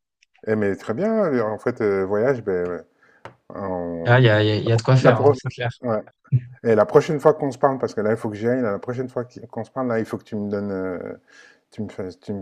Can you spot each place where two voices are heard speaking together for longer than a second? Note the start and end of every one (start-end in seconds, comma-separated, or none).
none